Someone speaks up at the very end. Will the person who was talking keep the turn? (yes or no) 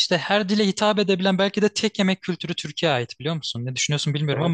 no